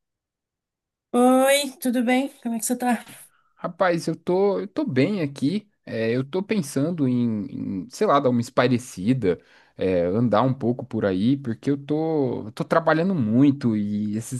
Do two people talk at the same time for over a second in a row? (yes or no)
no